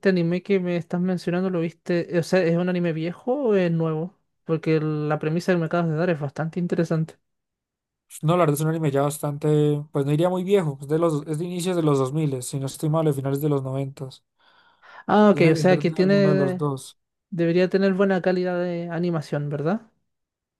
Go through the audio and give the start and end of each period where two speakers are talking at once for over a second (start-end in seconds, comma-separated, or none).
15.3-16.7